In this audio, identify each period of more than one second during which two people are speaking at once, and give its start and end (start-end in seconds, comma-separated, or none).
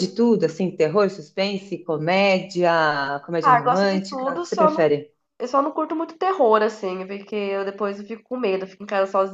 3.4-4.9